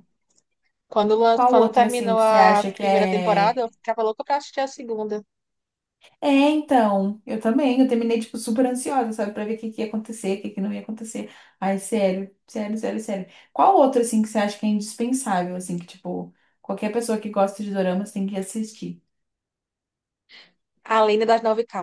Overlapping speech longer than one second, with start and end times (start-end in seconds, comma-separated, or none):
1.3-3.6